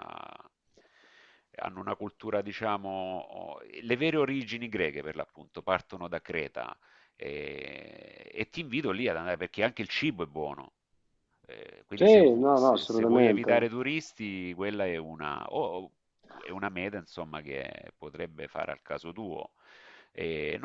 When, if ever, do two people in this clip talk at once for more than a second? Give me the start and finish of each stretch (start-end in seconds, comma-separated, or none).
11.9-13.5